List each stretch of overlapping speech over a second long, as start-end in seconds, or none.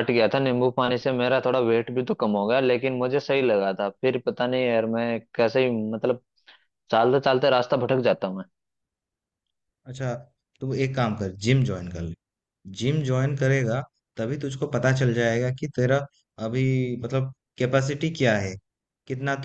none